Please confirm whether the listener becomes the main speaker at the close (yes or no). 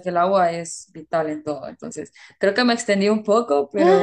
yes